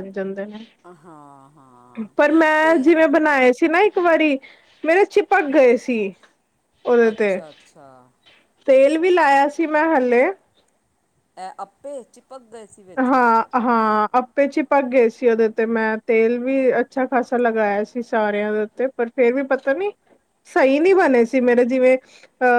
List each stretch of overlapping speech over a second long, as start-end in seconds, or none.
none